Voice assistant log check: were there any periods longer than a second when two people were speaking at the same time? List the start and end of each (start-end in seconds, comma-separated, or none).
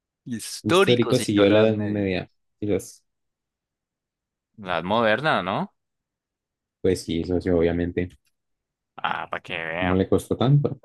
0.6-2.1